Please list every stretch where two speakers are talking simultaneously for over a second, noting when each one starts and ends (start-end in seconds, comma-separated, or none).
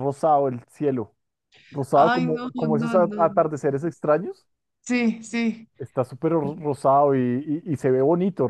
1.9-3.5